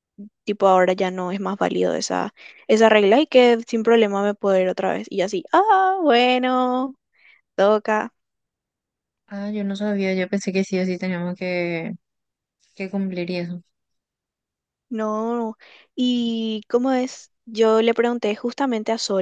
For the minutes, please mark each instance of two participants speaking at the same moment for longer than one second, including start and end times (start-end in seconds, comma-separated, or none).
none